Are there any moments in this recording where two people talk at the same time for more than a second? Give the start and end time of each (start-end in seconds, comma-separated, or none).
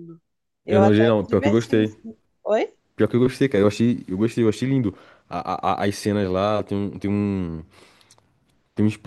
0.7-1.9